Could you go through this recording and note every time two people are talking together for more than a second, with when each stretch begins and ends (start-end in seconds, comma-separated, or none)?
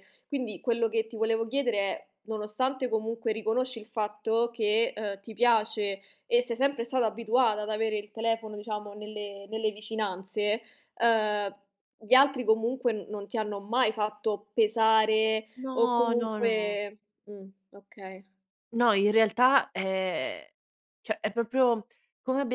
15.6-16.8